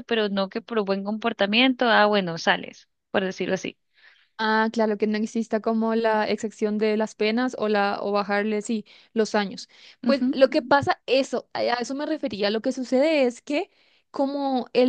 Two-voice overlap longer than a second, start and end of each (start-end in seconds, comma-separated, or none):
none